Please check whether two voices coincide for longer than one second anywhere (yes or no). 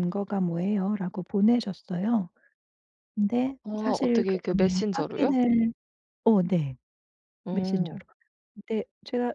yes